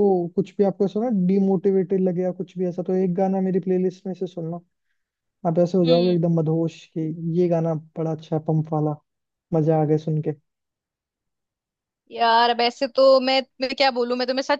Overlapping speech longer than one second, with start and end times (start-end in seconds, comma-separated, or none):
none